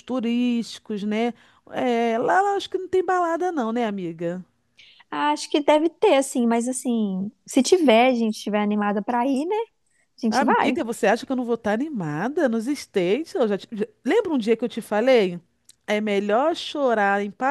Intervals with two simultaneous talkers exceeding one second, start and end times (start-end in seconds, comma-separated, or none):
none